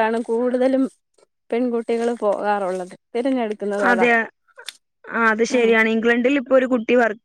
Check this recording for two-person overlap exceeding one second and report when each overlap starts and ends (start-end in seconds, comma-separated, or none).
none